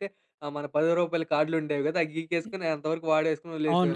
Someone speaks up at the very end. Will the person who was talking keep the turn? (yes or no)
no